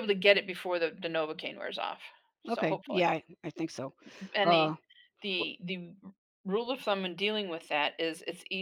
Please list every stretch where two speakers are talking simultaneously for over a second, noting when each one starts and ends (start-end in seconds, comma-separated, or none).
none